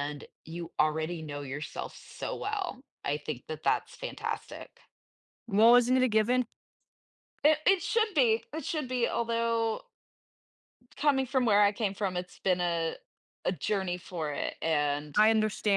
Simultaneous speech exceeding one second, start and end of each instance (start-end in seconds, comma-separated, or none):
none